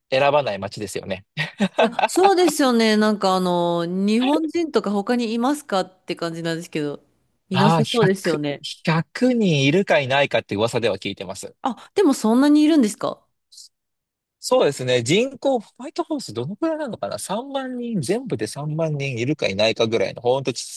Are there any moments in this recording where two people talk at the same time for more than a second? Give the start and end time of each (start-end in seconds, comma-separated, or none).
none